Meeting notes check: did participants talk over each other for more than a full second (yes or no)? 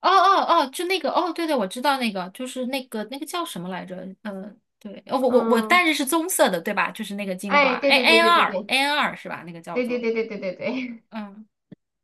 yes